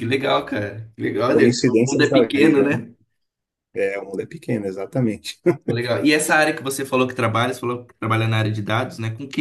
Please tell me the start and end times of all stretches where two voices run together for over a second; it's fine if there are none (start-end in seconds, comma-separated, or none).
1.3-2.8